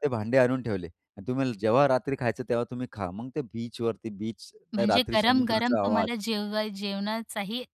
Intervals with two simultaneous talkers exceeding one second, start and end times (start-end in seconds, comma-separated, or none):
4.8-6.1